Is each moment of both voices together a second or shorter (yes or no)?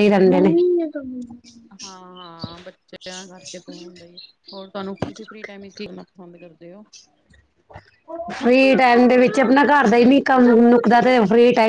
yes